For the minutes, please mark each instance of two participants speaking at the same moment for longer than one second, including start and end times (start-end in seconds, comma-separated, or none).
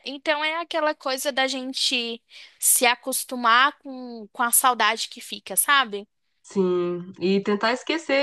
none